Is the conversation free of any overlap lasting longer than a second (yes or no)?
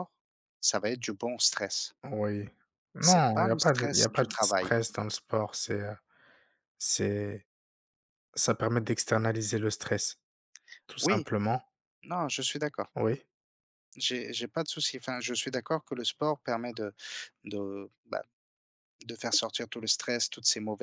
no